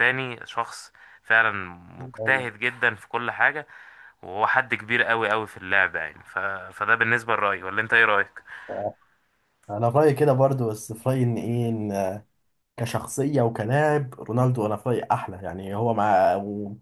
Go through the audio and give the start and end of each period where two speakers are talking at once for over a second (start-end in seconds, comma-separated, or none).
none